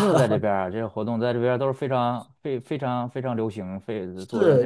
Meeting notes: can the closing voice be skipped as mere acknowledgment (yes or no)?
no